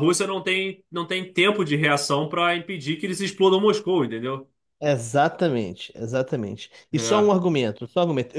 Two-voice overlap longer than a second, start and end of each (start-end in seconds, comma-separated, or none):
none